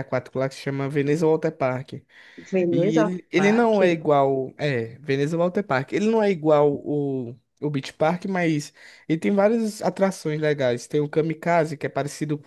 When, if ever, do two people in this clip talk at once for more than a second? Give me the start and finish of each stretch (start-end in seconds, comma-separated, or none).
2.7-4.0